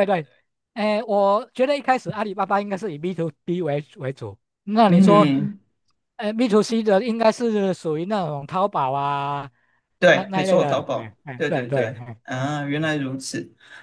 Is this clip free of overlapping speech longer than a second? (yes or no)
no